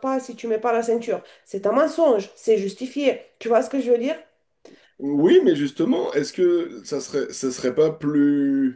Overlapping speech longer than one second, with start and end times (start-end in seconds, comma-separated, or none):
none